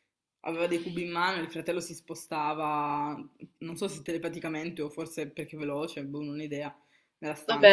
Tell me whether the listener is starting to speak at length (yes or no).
yes